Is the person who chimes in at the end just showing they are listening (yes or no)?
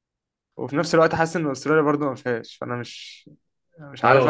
no